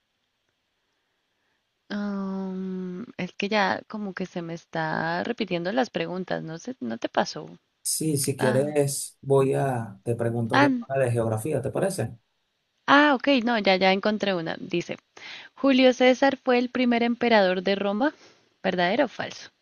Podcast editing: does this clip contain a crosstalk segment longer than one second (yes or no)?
no